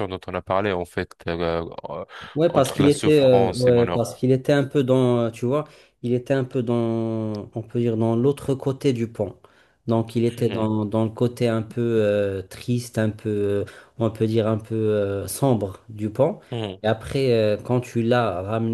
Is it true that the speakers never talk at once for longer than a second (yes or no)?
no